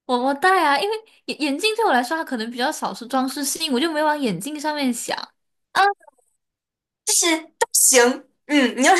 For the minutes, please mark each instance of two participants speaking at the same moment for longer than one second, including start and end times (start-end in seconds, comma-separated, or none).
none